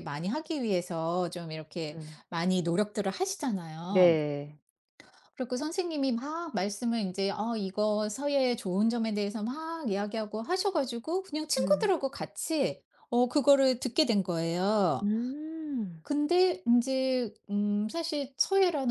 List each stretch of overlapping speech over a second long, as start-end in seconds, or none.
none